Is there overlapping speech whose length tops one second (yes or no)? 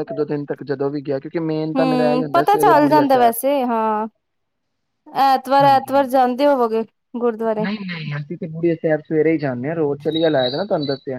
yes